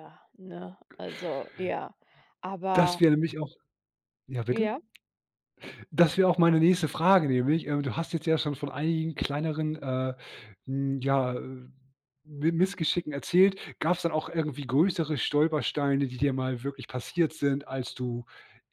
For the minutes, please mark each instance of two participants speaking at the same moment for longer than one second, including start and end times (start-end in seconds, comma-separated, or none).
none